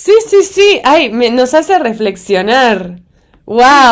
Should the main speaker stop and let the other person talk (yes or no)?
yes